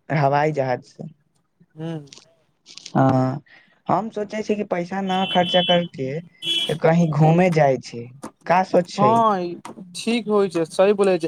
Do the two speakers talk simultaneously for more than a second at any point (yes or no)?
no